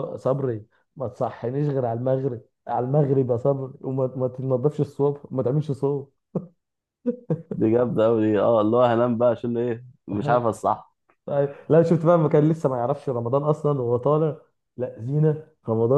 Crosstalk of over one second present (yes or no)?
no